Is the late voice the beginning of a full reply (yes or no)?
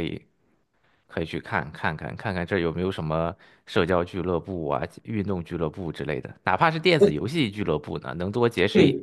yes